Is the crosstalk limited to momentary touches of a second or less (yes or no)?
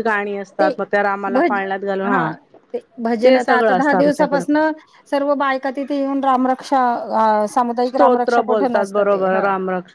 no